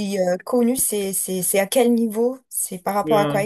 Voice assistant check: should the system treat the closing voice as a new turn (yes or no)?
yes